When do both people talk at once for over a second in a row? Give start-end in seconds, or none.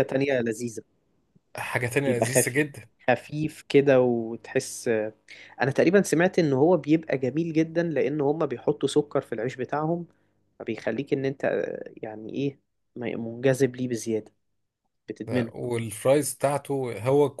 none